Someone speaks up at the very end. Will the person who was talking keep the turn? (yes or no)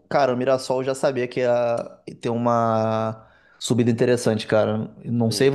yes